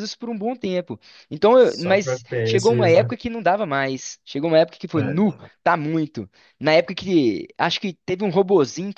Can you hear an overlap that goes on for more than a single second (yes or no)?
yes